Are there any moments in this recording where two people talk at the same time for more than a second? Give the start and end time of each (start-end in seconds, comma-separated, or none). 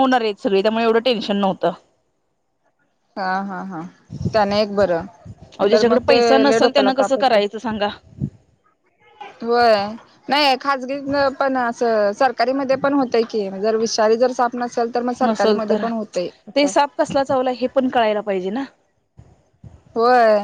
5.7-7.4